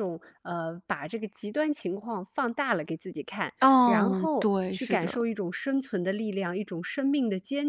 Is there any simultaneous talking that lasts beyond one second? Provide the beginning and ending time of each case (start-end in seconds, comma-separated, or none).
3.6-5.2